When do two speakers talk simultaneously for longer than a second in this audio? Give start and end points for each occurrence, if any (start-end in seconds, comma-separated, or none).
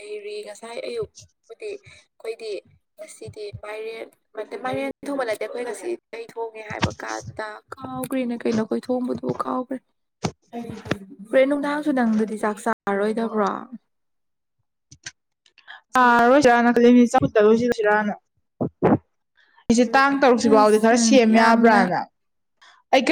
20.4-21.8